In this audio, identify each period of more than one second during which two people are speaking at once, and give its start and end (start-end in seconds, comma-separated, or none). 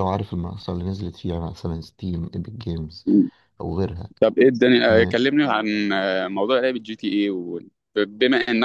none